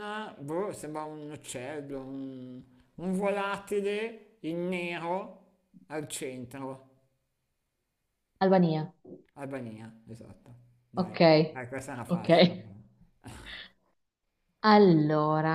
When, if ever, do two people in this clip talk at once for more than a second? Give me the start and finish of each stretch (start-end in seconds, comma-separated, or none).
none